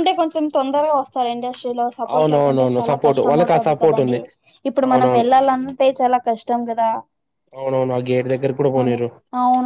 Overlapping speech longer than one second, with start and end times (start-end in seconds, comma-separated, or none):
2.1-4.2